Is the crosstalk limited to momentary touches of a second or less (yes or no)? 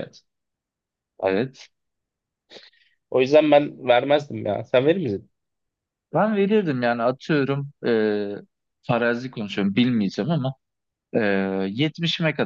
yes